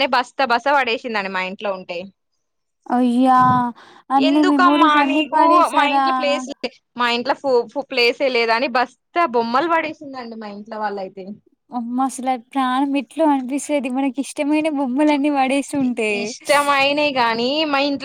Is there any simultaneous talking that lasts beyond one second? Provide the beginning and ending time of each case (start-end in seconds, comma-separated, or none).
4.3-6.4